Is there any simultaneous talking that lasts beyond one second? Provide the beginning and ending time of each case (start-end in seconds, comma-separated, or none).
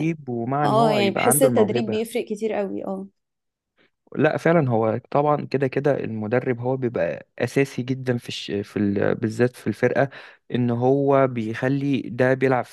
0.6-2.0